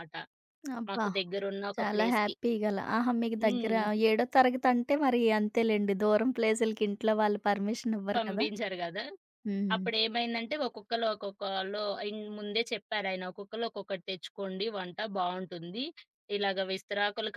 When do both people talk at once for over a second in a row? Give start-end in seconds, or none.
none